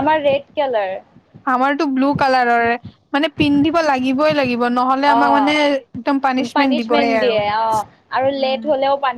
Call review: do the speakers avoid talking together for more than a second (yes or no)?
no